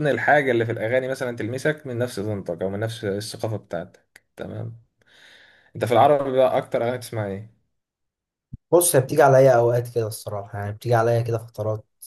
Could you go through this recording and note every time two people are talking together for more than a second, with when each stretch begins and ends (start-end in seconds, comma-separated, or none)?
none